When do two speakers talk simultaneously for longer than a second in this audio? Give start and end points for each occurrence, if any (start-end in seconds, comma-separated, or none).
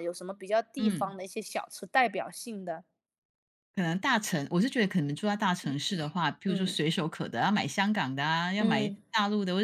none